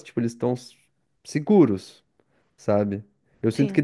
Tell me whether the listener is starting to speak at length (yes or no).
no